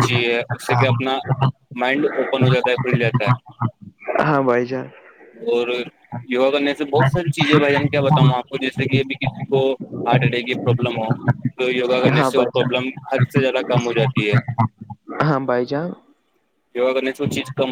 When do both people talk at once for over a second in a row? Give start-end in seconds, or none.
none